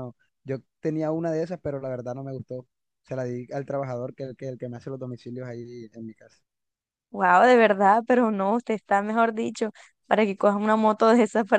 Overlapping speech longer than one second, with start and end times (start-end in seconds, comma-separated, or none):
none